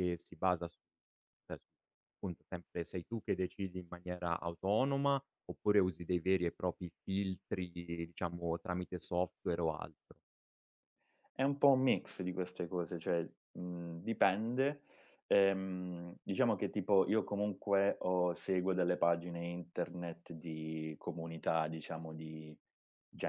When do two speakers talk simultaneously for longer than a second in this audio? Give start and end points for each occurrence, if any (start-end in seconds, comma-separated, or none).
none